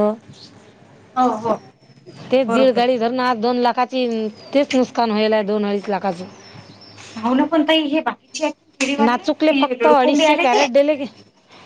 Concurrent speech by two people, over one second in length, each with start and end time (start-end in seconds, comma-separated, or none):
none